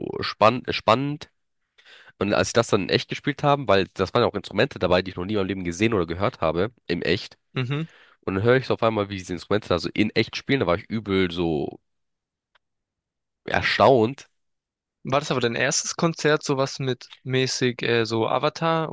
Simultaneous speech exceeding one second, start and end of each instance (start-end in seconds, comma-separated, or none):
none